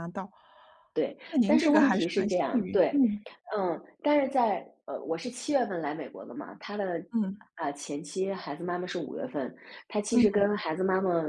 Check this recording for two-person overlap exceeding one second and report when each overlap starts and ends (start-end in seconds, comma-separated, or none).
1.3-3.0